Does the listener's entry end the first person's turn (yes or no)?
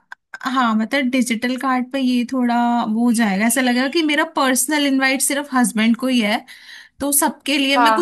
no